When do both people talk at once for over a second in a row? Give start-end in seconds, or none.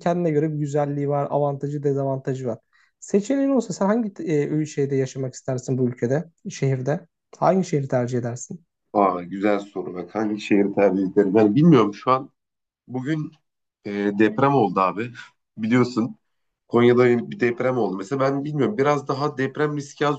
none